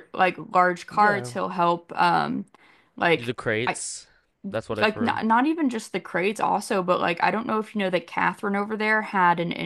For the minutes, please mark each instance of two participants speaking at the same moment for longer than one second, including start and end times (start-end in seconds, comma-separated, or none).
none